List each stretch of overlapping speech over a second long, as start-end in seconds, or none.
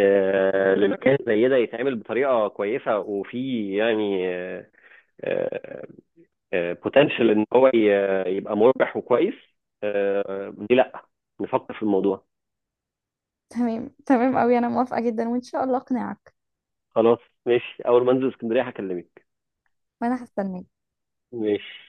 none